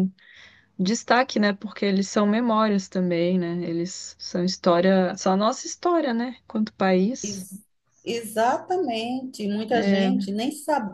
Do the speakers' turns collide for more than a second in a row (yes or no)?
no